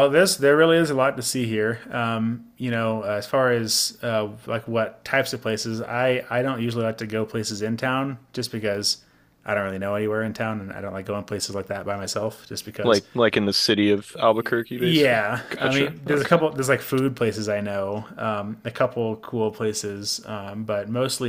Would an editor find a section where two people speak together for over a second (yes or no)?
yes